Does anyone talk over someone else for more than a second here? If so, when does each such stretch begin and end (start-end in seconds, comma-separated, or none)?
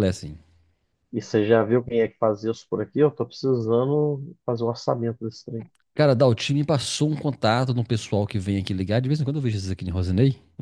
none